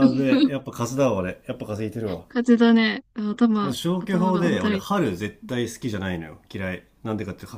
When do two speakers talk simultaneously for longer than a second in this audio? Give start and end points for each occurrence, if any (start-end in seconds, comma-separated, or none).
3.6-5.0